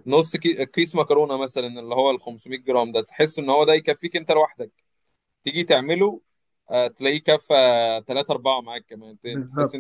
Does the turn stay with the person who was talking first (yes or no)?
yes